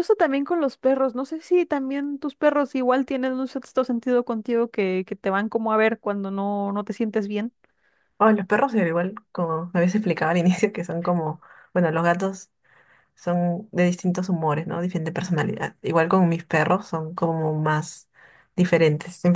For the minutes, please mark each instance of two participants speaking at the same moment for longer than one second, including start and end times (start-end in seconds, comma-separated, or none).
none